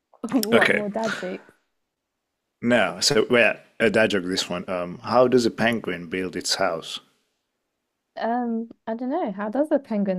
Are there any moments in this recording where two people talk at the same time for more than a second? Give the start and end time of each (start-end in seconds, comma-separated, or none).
none